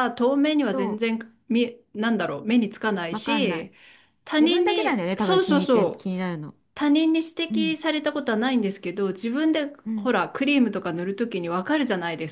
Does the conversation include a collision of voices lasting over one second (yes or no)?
yes